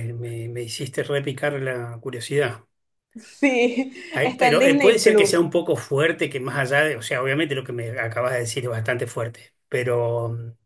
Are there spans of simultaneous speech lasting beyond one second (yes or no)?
yes